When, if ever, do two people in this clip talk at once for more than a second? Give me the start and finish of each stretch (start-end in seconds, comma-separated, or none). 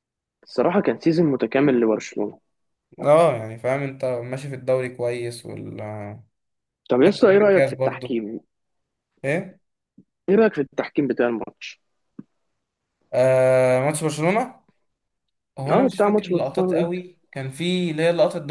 15.7-17.0